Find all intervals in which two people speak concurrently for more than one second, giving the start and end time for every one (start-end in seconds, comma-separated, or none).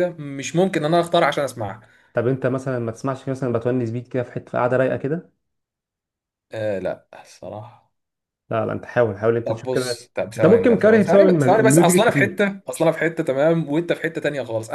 9.4-12.4